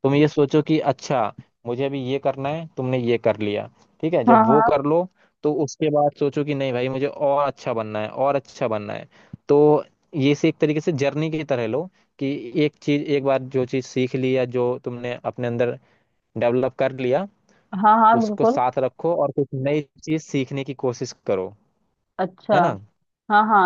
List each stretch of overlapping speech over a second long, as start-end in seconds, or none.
none